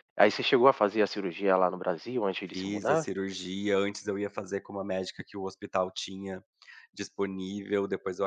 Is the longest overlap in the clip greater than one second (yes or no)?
no